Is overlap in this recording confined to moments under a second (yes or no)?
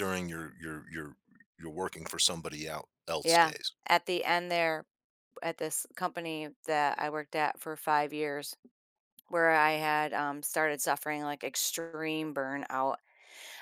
yes